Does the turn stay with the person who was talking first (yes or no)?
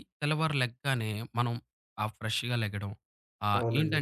yes